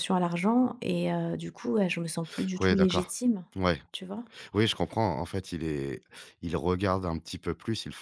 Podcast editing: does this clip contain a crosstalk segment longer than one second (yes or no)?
no